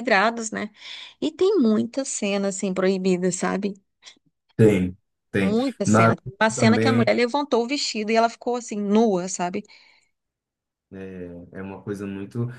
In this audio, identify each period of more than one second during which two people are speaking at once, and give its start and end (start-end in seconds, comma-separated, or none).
5.4-7.1